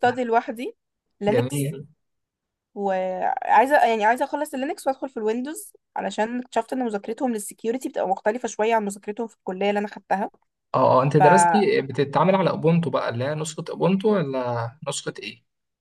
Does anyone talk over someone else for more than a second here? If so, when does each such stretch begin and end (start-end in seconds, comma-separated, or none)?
none